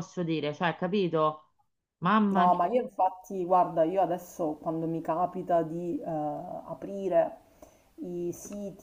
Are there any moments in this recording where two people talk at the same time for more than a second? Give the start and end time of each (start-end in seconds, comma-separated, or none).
none